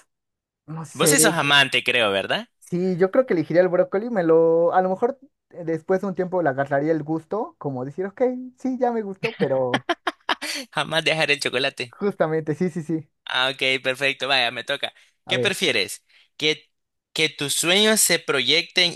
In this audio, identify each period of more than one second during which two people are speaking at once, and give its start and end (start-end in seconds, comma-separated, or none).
none